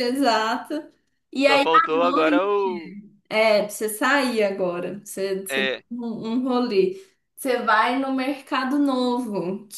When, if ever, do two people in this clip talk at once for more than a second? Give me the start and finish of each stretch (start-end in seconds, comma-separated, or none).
1.5-2.9